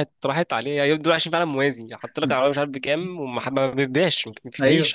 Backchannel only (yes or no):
no